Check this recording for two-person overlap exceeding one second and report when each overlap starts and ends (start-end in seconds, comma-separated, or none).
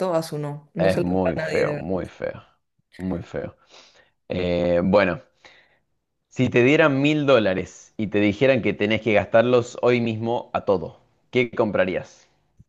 0.8-2.1